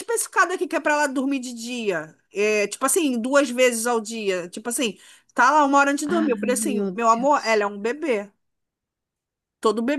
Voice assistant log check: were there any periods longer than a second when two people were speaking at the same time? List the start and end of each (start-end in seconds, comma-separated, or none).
6.0-7.7